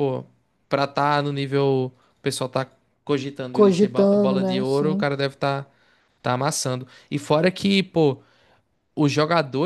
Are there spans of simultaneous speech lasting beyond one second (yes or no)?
yes